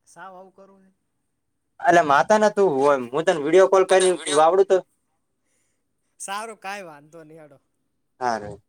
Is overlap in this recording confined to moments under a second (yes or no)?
yes